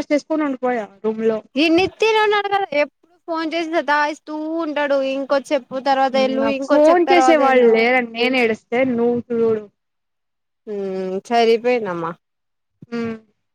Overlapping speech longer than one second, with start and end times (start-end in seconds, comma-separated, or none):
none